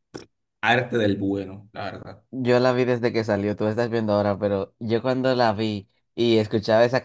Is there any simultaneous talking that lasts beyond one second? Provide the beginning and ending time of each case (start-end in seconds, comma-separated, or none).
none